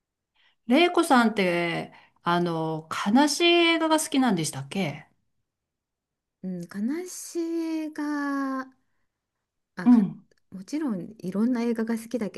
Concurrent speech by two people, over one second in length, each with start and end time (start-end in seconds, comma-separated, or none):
none